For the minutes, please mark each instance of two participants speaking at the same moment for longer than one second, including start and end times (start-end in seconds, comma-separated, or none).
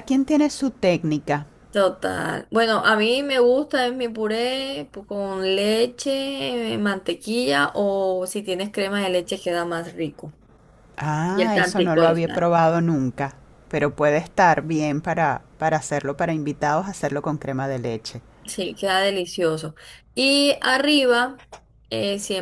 11.3-12.5